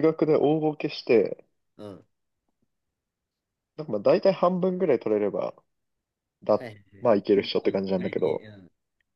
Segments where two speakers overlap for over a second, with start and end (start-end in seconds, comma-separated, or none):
6.6-8.4